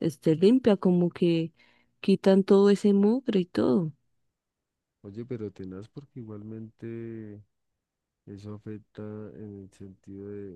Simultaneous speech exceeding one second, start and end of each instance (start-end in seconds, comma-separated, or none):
none